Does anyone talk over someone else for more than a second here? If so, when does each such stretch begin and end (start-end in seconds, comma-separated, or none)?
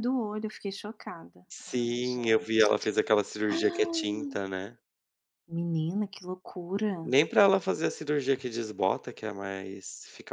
1.5-2.9